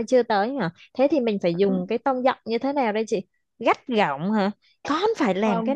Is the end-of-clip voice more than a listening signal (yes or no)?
no